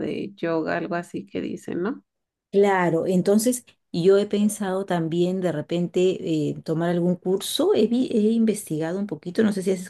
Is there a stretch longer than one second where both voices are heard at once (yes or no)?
no